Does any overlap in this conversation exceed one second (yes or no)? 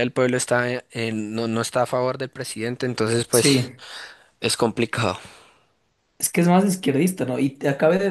no